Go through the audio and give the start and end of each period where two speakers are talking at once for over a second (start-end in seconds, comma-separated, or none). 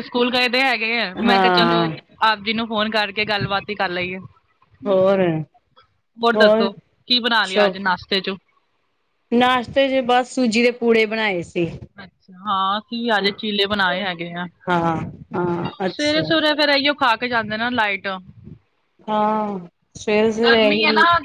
none